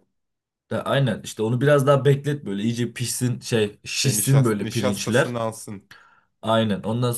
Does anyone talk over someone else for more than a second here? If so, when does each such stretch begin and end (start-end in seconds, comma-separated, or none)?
4.0-5.4